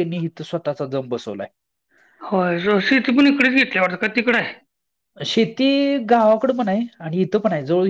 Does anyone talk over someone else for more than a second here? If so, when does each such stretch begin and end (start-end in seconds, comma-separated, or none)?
none